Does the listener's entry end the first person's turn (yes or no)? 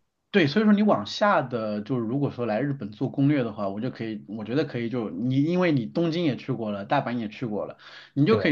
no